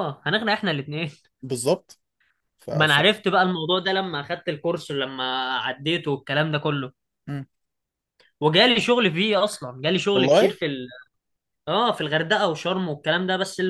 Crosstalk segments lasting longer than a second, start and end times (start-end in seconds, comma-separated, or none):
none